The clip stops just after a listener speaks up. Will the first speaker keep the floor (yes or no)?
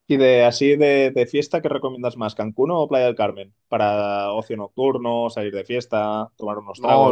no